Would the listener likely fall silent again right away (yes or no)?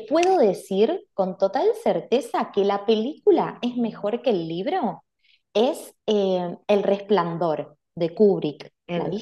no